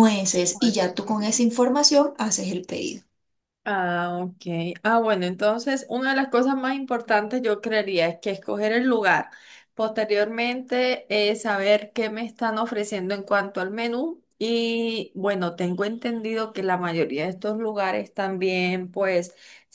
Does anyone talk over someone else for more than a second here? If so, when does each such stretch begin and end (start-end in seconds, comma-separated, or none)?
none